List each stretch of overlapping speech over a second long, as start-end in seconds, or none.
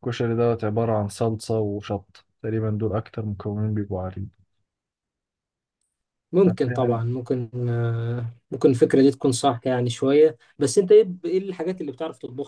none